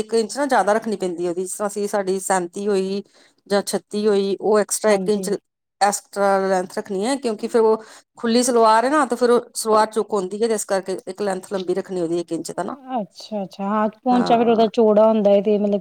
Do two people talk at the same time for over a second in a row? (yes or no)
no